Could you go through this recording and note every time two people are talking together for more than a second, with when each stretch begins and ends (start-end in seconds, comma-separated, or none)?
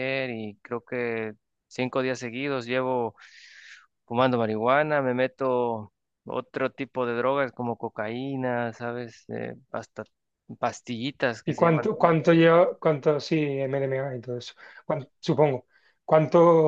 none